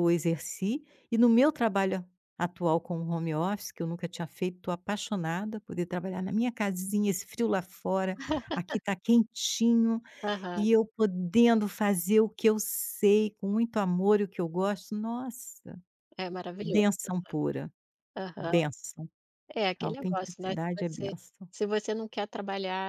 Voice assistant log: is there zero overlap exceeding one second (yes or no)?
no